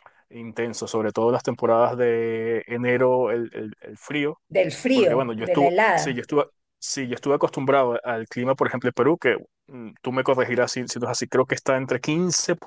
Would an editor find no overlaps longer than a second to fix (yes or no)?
no